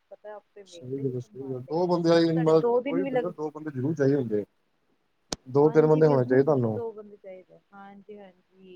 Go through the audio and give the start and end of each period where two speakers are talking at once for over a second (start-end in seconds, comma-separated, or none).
0.7-3.3, 5.6-6.8